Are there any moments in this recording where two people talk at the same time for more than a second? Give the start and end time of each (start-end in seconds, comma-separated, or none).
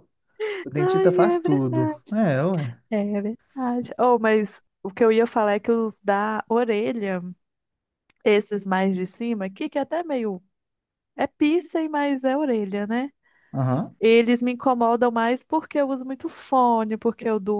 0.8-2.1